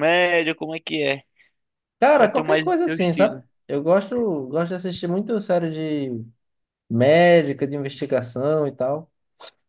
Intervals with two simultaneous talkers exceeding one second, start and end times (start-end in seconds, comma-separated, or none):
2.1-3.4